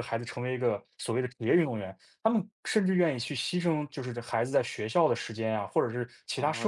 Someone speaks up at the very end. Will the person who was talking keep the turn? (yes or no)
no